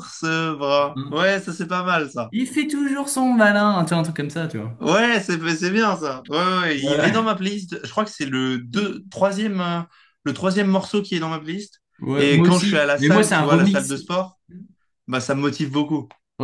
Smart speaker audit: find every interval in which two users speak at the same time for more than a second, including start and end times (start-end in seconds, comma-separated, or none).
12.2-13.9